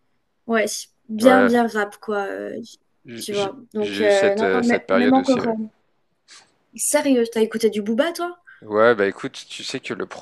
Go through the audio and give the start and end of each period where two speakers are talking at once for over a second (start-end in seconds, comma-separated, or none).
3.1-5.5